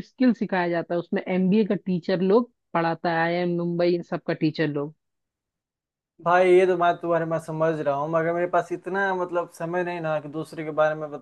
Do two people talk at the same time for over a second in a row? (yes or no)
no